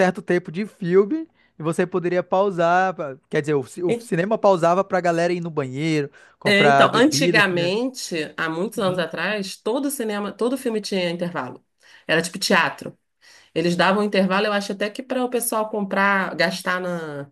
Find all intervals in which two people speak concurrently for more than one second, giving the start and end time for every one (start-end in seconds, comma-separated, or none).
6.5-7.8